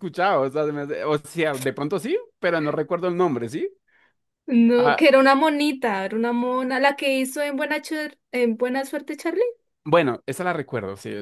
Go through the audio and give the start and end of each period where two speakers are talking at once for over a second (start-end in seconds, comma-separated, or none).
none